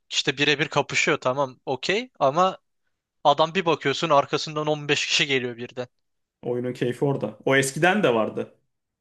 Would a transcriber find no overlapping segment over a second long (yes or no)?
yes